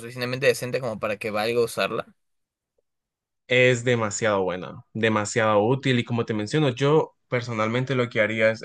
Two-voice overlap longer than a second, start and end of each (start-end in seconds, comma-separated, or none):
none